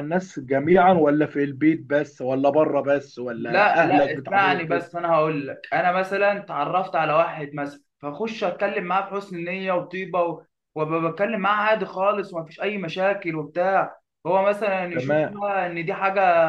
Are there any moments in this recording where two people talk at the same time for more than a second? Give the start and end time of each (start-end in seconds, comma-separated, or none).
3.4-4.9